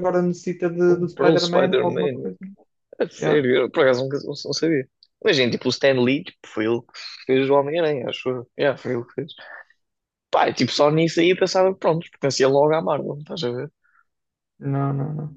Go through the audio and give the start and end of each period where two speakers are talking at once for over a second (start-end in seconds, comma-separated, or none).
0.9-2.3